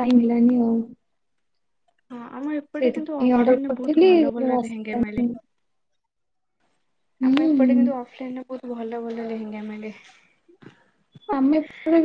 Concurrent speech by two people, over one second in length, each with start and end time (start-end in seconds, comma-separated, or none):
2.8-4.9